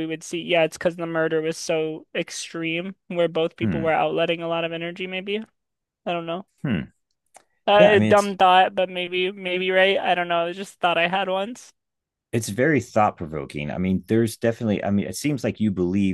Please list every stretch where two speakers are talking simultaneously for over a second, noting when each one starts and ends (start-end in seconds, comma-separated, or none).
none